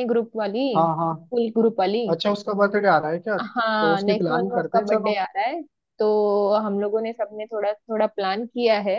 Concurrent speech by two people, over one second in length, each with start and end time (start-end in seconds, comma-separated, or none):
3.4-5.2